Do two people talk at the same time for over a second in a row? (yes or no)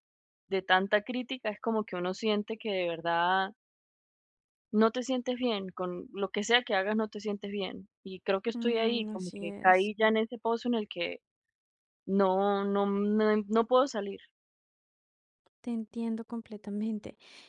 yes